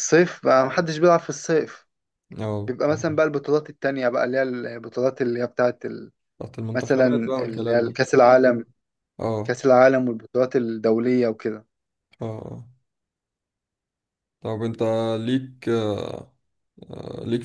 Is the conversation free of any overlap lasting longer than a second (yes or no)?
no